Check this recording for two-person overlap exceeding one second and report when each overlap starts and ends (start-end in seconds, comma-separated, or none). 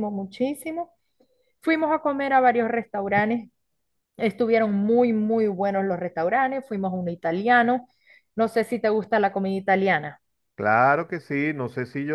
none